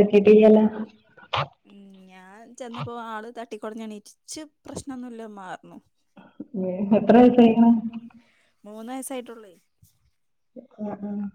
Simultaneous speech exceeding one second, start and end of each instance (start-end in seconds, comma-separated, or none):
none